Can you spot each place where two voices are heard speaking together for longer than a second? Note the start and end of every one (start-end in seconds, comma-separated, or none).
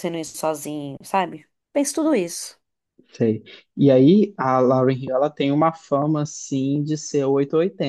none